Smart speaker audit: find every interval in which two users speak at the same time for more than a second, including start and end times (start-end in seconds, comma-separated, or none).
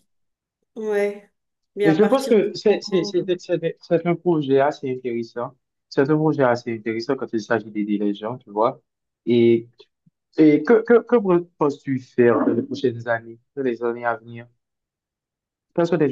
1.8-3.1